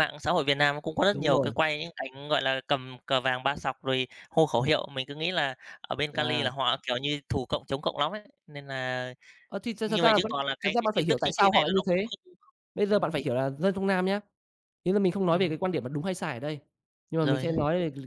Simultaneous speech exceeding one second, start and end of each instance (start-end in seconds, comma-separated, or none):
9.8-12.1